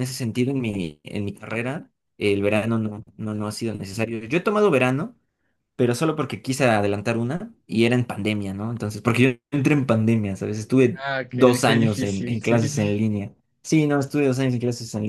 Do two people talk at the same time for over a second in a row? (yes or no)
yes